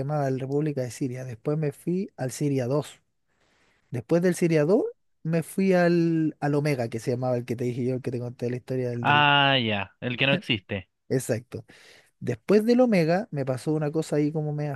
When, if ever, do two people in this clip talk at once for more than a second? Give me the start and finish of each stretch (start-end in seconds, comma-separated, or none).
none